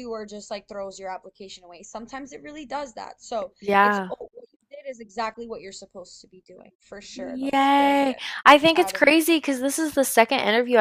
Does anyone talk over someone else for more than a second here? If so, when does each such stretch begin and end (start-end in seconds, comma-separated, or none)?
7.1-9.2